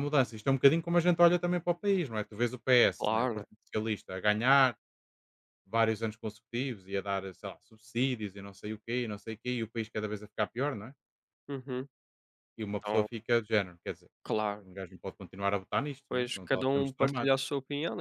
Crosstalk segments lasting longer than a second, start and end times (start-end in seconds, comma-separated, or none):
16.1-17.4